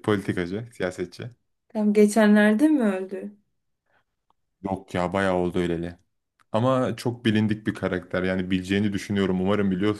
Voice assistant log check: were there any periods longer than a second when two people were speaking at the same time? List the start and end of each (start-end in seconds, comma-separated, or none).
none